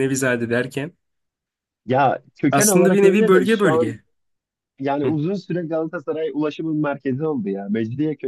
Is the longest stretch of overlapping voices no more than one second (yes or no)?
no